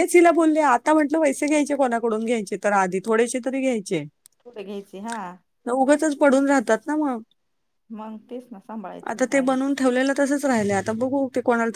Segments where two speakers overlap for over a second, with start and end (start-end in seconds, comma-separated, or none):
none